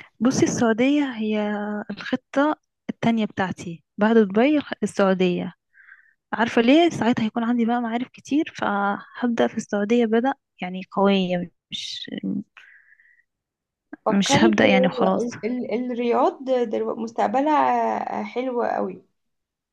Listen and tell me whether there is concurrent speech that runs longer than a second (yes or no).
yes